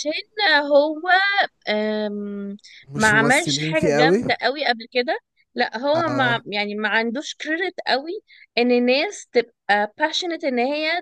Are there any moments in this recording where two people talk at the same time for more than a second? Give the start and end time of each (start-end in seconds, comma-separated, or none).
3.0-4.2